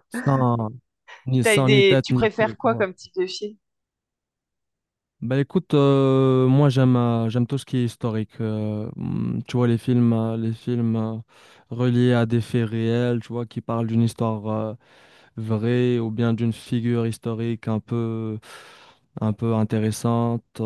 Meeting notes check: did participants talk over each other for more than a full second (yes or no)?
yes